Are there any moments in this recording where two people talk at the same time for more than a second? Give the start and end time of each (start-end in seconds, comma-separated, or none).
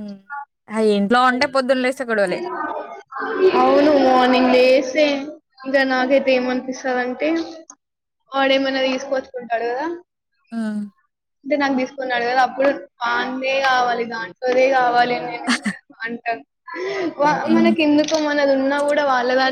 none